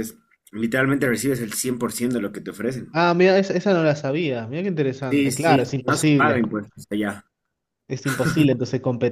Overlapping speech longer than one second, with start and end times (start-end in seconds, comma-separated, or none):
5.1-6.4